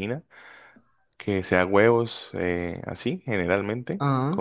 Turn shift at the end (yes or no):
no